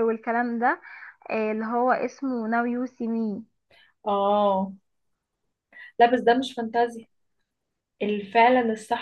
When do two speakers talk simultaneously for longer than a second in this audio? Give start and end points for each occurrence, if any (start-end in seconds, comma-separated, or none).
none